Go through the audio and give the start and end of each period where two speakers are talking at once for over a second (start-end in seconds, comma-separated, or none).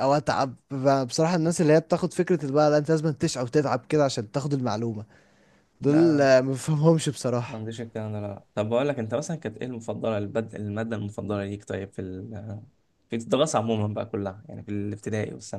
none